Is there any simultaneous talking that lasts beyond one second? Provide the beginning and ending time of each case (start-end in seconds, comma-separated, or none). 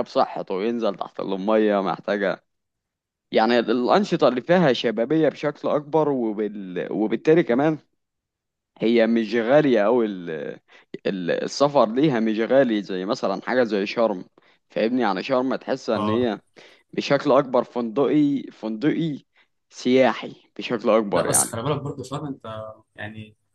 none